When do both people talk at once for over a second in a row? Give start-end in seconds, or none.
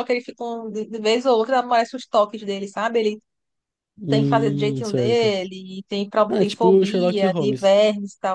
4.1-5.3, 6.3-7.8